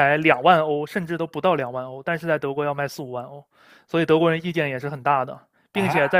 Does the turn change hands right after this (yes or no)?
no